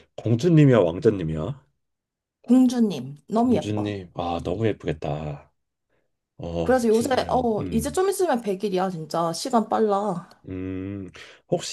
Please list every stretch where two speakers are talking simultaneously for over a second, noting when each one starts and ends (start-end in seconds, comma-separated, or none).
6.6-8.0